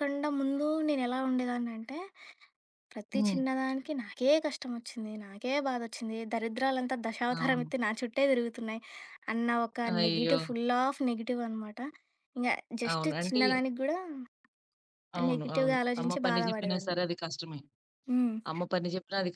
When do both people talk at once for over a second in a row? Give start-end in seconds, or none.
15.3-17.0